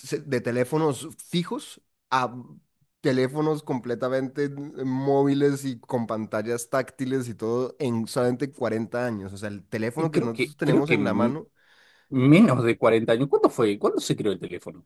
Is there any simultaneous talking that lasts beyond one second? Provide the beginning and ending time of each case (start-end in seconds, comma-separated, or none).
10.0-11.4